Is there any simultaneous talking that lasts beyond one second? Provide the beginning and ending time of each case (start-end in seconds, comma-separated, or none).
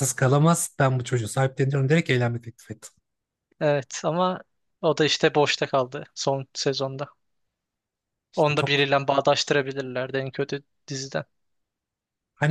none